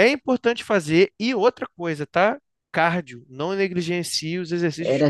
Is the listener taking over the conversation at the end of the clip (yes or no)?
yes